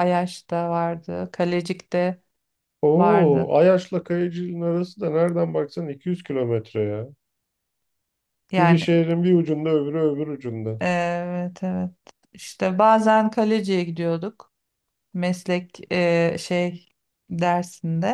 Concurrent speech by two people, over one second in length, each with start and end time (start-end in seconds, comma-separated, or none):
none